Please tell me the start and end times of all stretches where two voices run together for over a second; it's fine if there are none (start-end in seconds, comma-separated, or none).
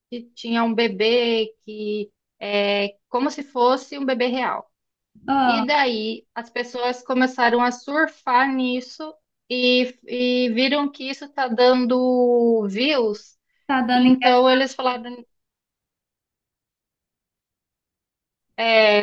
13.9-15.2